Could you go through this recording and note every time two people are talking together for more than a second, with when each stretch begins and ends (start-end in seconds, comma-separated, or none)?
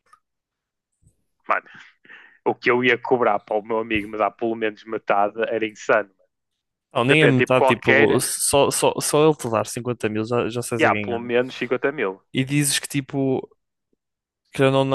7.0-8.3